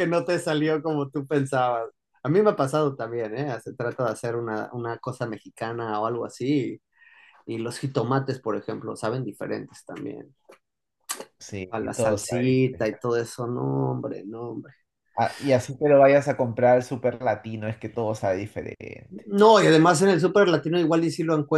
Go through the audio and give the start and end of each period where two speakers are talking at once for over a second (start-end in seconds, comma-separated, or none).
11.7-13.0